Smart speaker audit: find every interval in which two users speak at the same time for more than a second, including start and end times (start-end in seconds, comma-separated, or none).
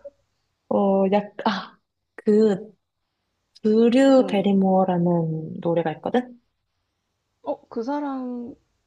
none